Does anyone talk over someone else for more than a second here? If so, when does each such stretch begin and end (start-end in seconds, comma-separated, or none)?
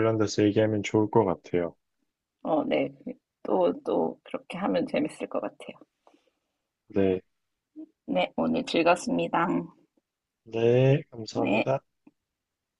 none